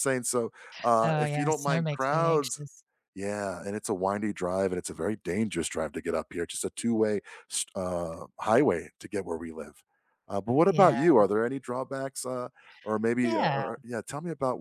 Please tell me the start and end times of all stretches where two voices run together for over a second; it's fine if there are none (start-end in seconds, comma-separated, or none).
1.0-2.6